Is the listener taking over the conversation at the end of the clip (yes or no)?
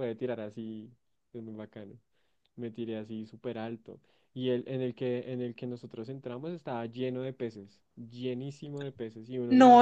yes